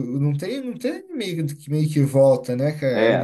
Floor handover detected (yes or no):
yes